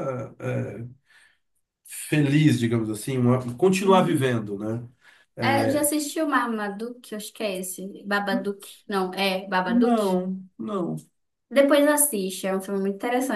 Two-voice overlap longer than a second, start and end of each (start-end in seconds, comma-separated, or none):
none